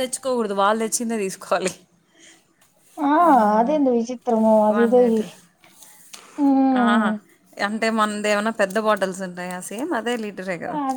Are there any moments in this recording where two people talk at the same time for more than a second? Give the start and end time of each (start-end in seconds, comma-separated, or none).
none